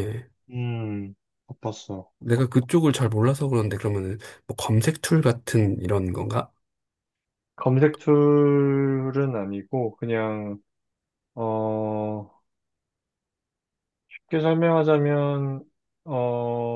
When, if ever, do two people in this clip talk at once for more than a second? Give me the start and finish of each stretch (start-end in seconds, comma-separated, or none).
none